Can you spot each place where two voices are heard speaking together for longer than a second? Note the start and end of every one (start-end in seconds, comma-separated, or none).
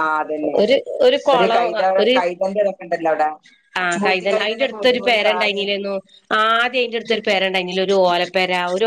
3.9-5.7